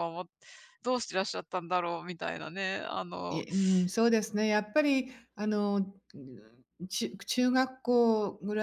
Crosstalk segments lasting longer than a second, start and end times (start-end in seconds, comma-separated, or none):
none